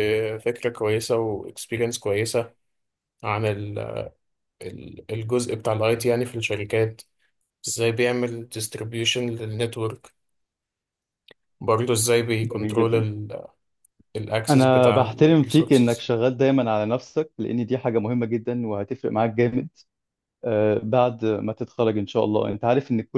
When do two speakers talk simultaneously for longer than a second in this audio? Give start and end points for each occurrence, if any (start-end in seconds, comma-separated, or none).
14.5-16.1